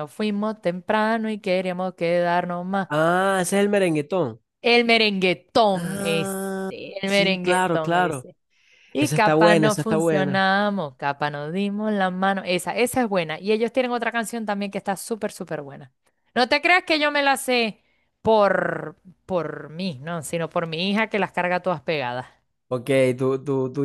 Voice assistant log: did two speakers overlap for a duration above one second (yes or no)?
yes